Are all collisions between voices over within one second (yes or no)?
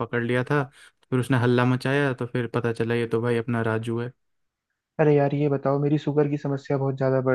yes